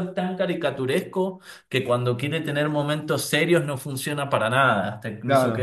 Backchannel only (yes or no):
no